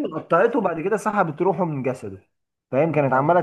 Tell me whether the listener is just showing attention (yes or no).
yes